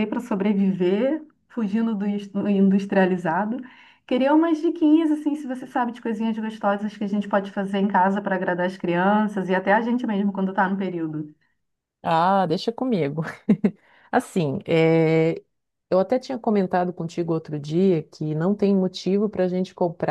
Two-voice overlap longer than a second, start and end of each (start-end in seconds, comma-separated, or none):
none